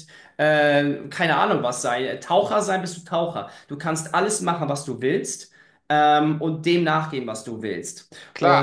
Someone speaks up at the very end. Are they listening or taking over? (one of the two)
taking over